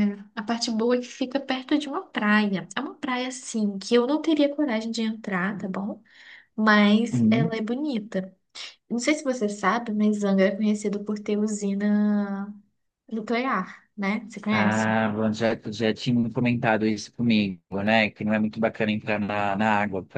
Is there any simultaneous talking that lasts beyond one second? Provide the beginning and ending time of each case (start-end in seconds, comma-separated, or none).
none